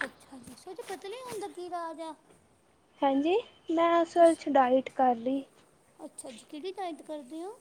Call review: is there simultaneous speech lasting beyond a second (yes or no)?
no